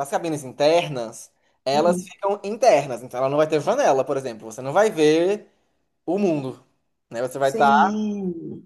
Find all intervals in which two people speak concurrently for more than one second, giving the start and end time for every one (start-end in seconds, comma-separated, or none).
none